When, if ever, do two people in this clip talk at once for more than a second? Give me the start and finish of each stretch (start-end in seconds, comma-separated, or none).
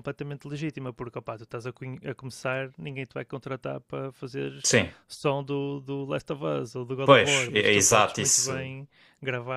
7.0-8.7